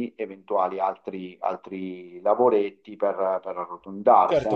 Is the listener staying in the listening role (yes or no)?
no